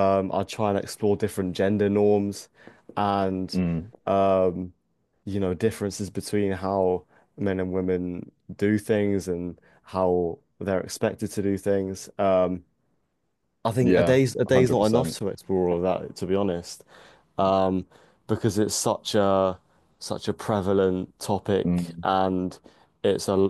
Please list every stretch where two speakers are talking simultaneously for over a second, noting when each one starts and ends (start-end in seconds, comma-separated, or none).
13.8-15.2